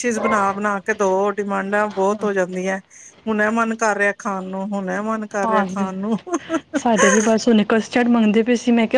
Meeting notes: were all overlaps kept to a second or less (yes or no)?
yes